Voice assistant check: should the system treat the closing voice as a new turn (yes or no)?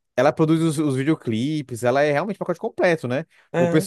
no